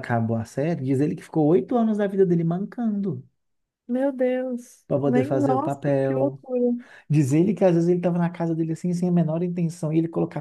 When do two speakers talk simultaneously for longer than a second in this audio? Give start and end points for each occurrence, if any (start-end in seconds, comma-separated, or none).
4.9-6.4